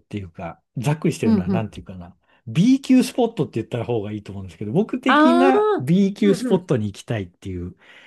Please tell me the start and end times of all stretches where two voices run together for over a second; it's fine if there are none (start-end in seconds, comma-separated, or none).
5.1-6.7